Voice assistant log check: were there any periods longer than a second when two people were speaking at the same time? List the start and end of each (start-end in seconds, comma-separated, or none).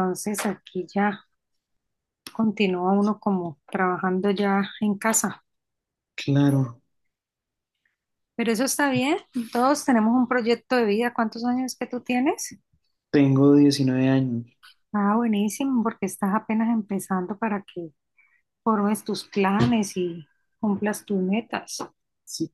none